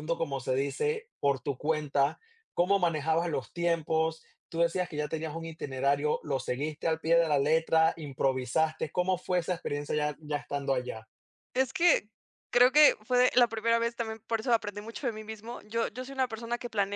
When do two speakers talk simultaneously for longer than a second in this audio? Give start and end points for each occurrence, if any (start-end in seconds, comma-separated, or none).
none